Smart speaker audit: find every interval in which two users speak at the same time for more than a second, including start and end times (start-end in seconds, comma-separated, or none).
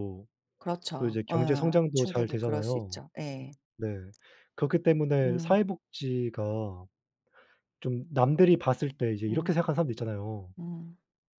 1.0-3.0